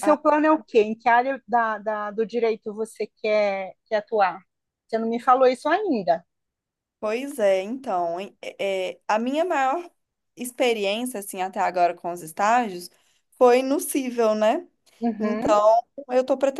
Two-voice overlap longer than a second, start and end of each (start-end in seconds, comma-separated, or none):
none